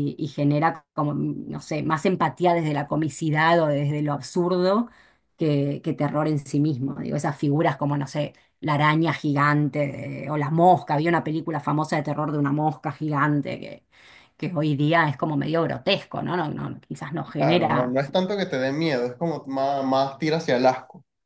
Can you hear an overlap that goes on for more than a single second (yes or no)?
no